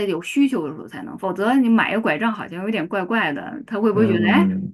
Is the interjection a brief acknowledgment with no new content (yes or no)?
yes